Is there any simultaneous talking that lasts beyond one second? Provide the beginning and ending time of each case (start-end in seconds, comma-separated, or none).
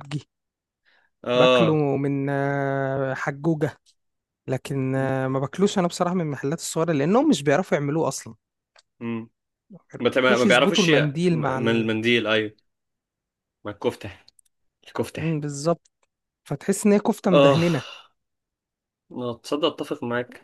10.2-11.9